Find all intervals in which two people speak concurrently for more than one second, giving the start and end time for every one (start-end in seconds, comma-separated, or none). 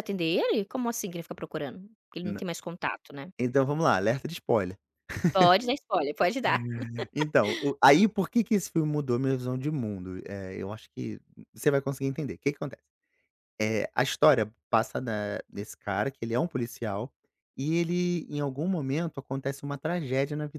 none